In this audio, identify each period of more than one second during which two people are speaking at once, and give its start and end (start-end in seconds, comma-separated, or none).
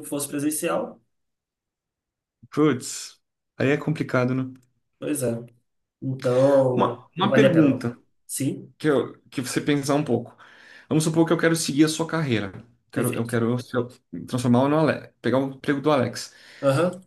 6.7-8.0